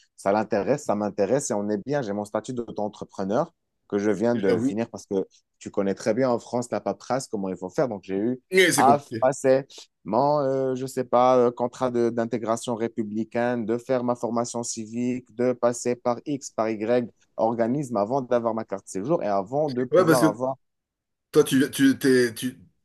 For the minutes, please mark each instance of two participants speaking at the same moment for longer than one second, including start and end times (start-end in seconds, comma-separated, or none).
none